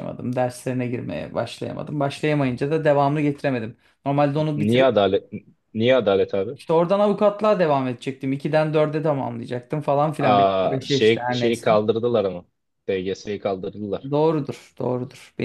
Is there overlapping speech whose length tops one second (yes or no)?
yes